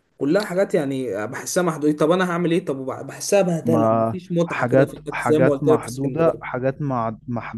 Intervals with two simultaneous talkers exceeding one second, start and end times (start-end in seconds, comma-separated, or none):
3.6-6.4